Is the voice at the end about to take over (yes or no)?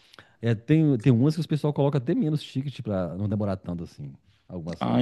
yes